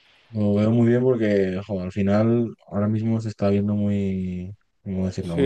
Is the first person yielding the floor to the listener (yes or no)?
yes